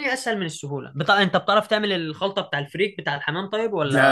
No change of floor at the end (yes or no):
no